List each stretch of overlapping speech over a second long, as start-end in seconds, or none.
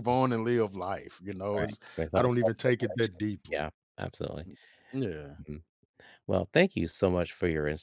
1.6-3.7